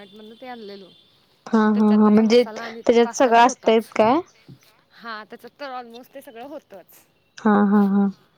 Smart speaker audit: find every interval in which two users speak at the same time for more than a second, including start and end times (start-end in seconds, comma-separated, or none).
1.7-3.9